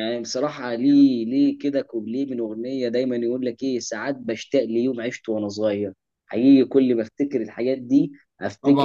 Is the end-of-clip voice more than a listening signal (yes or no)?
no